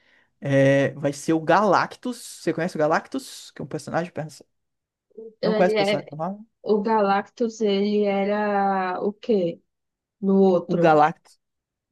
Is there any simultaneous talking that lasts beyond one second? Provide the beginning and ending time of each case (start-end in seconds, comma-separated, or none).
none